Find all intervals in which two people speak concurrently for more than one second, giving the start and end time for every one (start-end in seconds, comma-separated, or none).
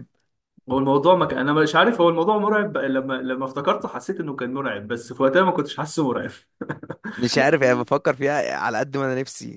none